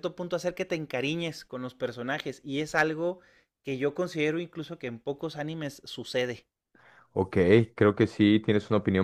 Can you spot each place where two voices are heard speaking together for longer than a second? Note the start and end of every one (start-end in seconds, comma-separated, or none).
none